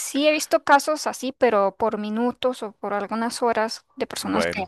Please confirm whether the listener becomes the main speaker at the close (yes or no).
no